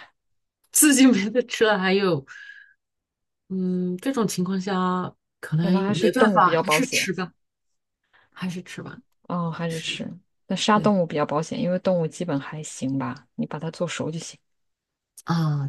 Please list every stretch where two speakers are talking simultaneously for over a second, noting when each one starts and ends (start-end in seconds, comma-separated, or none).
5.6-7.1